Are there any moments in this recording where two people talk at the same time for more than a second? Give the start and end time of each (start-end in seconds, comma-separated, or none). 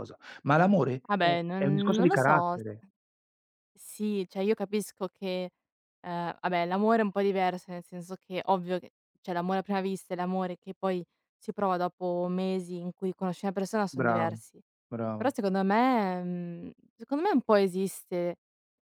1.1-2.6